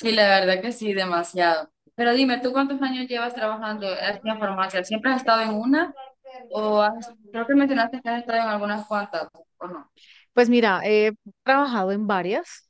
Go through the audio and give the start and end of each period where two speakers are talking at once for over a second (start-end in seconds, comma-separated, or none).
none